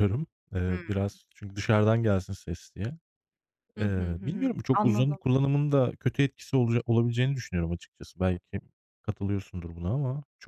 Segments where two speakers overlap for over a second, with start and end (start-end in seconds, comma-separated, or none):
3.8-5.2